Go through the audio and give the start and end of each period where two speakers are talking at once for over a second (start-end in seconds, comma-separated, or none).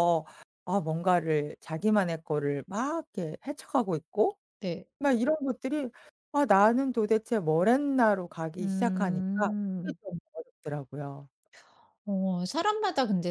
8.6-10.0